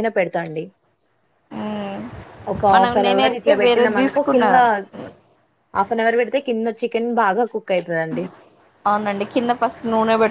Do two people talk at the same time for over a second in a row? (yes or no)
yes